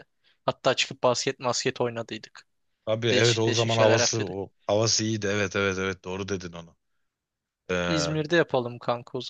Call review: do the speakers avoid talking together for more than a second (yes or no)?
no